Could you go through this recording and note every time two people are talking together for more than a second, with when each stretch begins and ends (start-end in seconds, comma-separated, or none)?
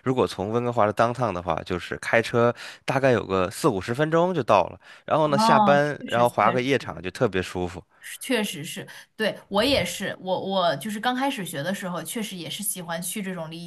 5.2-7.0